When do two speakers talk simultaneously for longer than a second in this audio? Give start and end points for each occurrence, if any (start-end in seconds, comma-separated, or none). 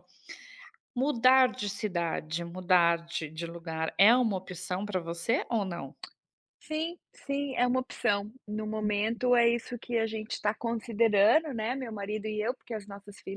none